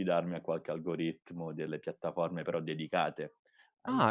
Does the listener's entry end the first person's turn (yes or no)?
yes